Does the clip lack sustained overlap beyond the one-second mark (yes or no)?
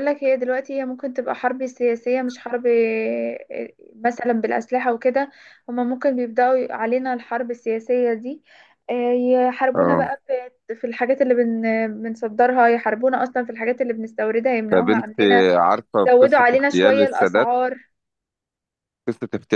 no